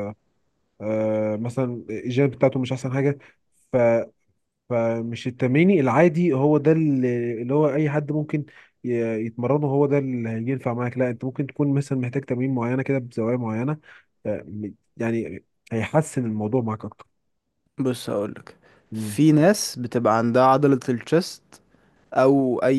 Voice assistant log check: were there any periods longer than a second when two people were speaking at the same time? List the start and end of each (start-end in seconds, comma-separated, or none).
none